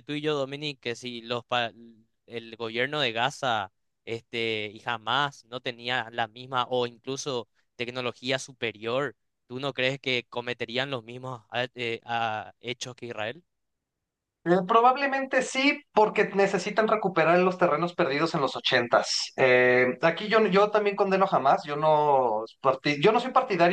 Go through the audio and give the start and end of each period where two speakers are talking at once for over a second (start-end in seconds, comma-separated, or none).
none